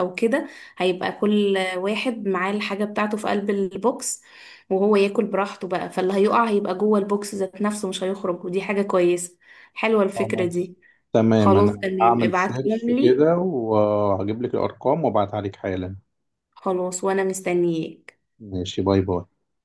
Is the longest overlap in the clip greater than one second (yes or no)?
yes